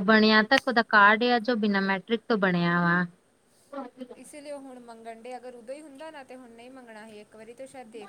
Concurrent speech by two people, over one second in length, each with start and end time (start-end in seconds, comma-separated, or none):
none